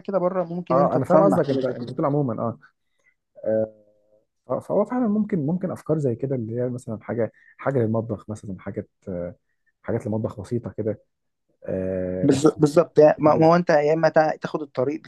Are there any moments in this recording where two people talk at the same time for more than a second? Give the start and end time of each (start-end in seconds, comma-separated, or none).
0.7-2.0